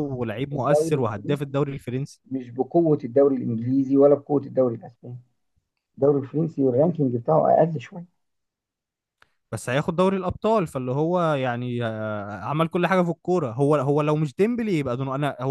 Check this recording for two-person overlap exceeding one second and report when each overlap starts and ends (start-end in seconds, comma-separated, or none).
0.5-1.8